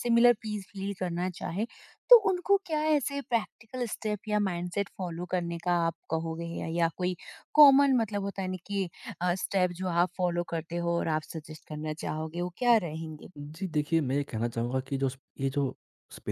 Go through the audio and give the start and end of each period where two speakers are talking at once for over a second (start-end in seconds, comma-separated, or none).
none